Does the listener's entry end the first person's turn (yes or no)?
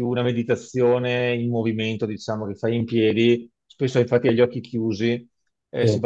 no